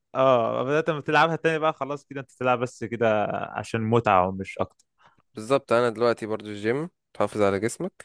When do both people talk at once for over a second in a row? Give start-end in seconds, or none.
none